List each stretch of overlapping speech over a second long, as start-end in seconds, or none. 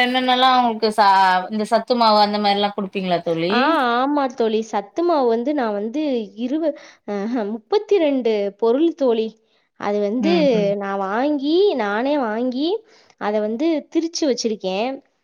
none